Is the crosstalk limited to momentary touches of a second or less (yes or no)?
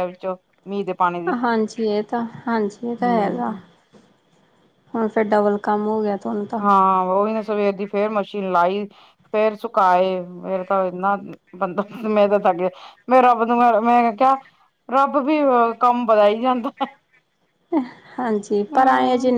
yes